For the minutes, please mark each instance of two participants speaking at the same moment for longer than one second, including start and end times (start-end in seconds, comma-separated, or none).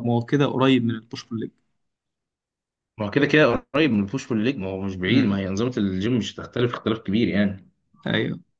none